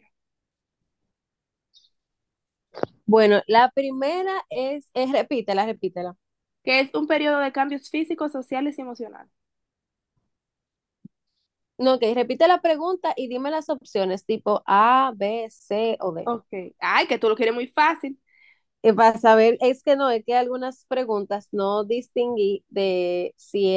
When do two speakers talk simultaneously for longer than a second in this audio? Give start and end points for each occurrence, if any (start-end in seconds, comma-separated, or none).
none